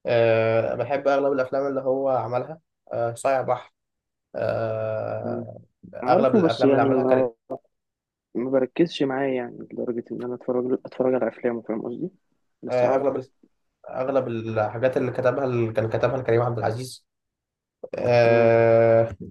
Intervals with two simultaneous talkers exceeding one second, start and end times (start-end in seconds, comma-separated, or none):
6.1-7.3